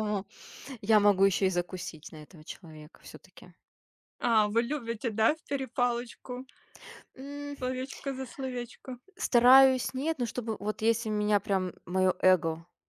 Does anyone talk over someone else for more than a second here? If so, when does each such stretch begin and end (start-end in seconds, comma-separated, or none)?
none